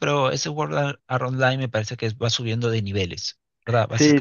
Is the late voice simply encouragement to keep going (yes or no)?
no